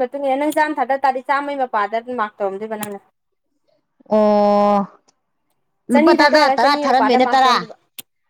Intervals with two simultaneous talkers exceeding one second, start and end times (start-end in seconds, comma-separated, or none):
5.9-7.5